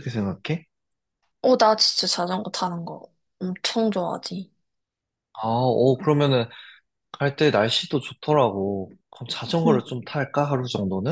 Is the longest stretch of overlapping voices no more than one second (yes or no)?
yes